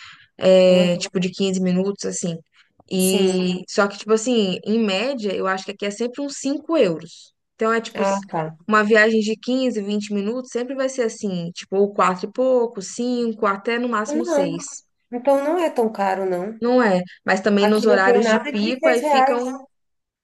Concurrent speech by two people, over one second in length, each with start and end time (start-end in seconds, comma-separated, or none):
17.6-19.6